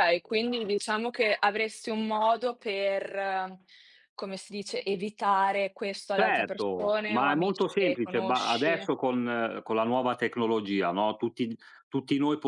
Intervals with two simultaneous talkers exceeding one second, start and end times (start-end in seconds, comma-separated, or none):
6.2-8.9